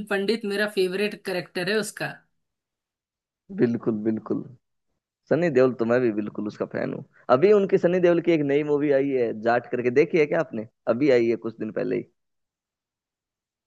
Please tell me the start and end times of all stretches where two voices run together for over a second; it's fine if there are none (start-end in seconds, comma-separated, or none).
none